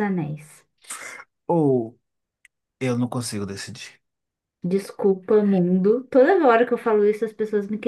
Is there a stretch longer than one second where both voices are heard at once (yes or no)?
no